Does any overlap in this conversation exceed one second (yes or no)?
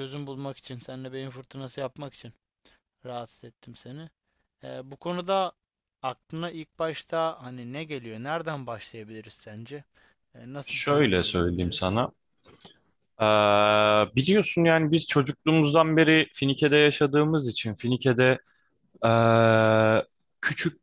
yes